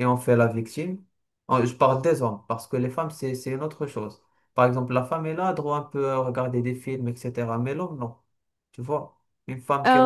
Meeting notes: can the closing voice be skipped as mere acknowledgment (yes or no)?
no